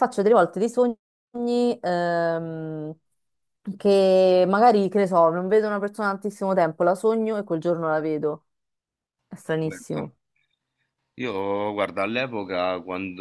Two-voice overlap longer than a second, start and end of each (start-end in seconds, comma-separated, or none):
none